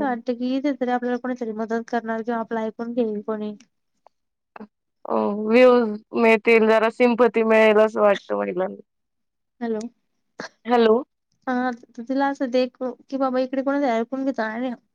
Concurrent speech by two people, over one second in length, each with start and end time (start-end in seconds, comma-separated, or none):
none